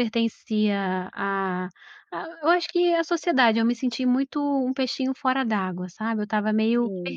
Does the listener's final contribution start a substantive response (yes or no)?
yes